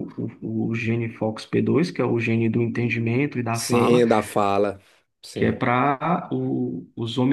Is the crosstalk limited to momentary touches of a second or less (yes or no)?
yes